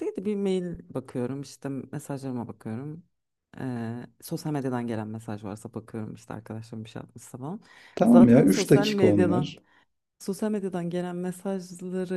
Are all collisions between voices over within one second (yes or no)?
no